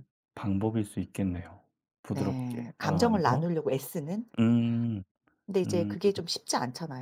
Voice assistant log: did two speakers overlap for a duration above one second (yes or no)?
yes